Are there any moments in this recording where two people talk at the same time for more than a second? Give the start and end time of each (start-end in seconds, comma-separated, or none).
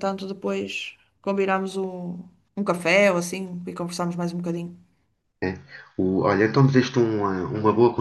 none